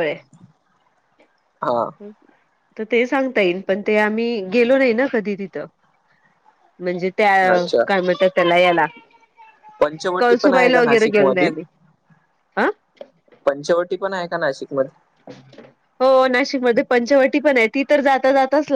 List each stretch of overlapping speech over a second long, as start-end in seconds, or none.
10.2-11.5